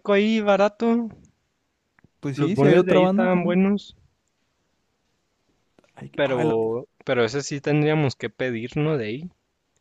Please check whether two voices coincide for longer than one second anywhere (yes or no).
yes